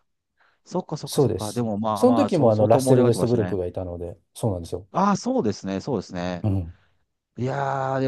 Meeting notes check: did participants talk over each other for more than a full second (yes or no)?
yes